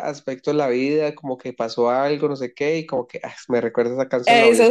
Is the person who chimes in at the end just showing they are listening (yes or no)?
no